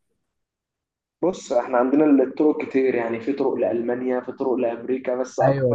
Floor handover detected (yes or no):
yes